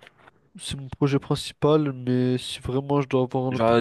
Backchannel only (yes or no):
no